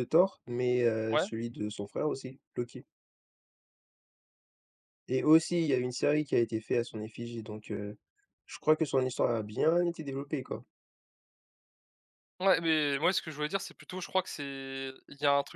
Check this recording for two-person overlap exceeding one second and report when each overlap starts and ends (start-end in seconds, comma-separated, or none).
none